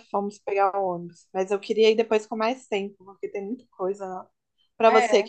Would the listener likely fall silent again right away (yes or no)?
yes